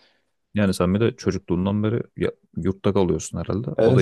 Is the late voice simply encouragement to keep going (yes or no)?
no